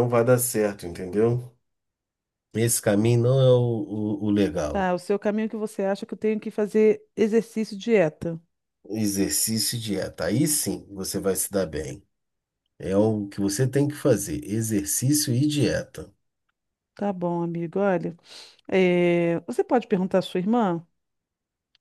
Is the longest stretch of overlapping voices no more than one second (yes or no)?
yes